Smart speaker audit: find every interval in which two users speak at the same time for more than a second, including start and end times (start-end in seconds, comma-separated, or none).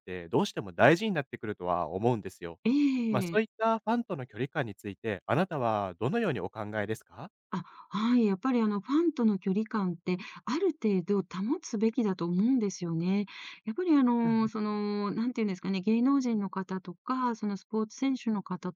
none